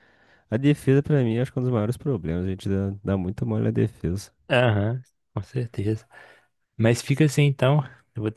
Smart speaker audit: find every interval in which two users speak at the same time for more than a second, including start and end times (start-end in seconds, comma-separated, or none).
none